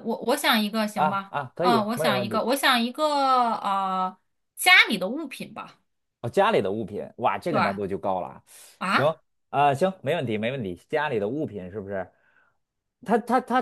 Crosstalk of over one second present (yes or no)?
yes